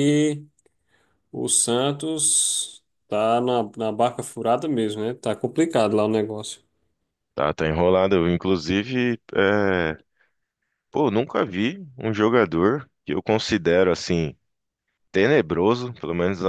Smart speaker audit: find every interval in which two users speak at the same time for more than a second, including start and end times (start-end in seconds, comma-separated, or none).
none